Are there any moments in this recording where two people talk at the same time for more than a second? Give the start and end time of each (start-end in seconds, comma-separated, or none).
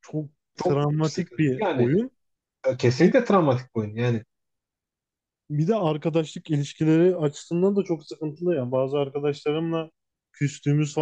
0.6-2.0